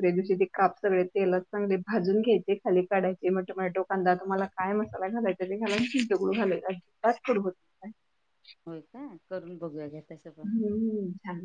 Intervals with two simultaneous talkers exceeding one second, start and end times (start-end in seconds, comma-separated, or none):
none